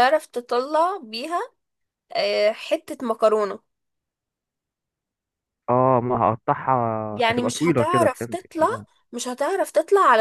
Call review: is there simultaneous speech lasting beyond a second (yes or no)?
yes